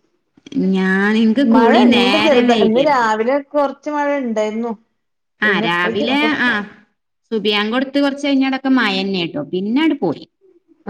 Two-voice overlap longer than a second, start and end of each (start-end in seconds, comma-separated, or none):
1.5-3.1